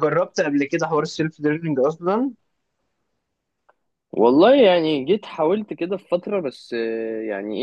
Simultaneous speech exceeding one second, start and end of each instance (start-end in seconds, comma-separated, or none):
none